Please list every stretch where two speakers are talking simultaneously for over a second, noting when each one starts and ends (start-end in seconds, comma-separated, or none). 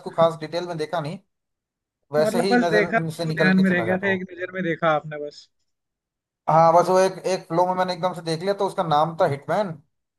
2.2-4.2